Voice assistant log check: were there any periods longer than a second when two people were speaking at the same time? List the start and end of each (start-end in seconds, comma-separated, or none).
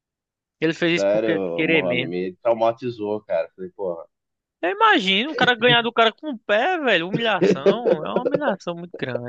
0.9-2.1